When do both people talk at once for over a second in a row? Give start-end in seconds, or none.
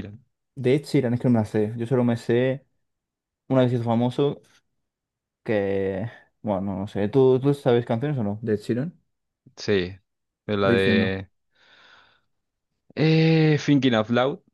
none